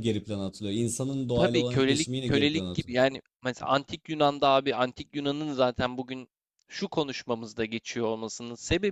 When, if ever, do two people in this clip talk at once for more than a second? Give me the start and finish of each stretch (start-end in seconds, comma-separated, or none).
1.3-3.0